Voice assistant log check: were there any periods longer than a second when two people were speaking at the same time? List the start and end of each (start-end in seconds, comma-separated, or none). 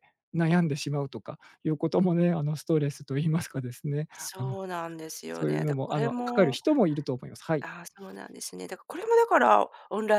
5.3-6.6